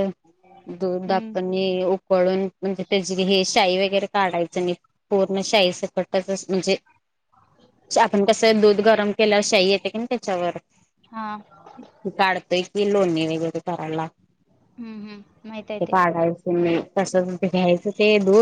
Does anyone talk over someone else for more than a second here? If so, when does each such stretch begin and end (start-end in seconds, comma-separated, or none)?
none